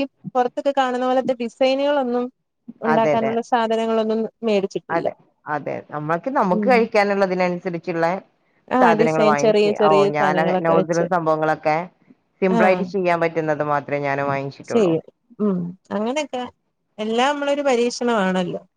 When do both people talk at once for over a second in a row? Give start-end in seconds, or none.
8.8-11.1